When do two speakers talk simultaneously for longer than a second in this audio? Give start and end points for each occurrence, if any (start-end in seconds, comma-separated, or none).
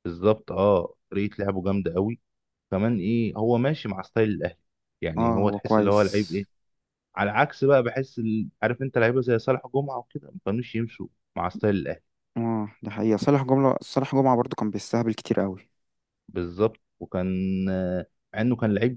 5.2-6.4